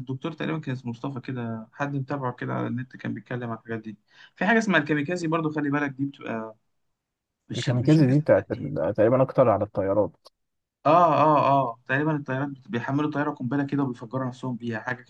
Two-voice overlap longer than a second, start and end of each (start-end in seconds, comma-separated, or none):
7.5-8.8